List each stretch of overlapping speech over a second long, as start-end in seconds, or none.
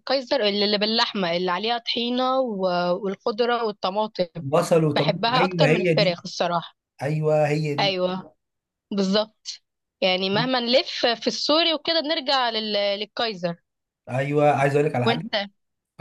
5.0-6.2